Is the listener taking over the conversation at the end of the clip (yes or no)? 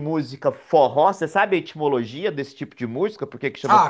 yes